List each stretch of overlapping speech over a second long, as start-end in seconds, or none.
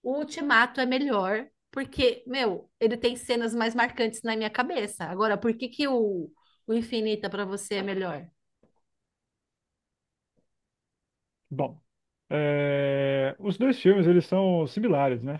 none